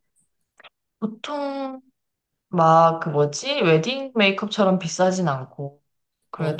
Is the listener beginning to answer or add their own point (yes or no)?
no